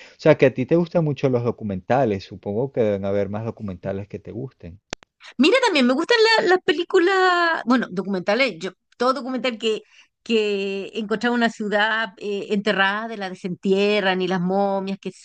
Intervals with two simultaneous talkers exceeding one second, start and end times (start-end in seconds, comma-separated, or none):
none